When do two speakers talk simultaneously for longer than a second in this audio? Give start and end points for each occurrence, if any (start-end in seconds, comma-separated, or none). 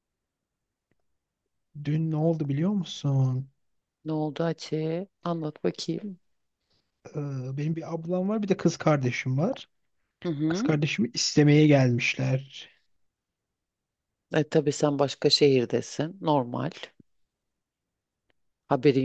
none